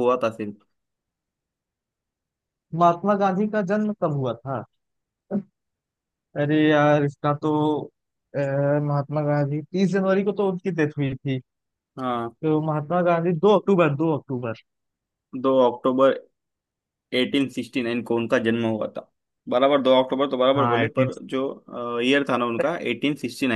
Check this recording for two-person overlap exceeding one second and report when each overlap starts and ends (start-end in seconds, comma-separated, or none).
none